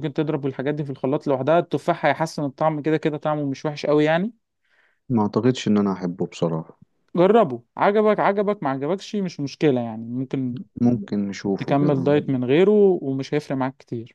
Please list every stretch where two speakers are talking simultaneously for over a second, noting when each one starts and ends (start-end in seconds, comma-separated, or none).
none